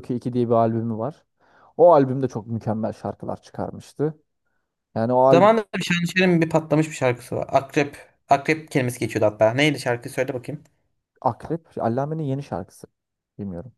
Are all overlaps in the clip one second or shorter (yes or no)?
yes